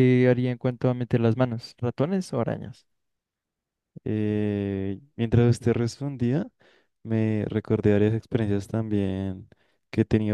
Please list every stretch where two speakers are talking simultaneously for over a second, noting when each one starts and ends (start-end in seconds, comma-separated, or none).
none